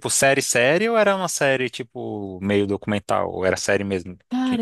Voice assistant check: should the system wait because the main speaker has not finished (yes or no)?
no